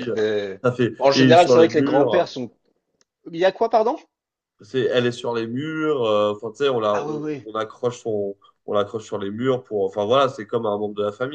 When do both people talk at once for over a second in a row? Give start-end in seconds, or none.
1.0-2.4